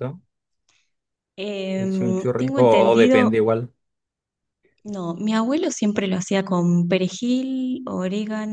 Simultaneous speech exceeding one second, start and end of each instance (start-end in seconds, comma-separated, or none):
1.8-3.3